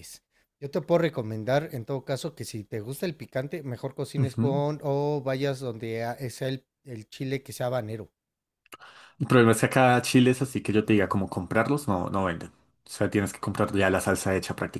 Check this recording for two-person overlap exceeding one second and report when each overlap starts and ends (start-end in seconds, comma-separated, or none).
none